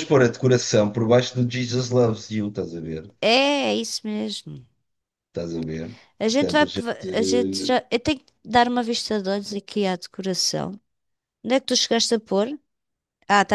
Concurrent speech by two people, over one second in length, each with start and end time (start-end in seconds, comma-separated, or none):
none